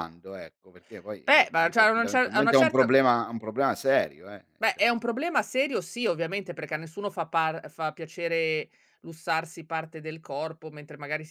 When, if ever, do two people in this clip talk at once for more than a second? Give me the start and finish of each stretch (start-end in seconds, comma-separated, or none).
1.2-2.9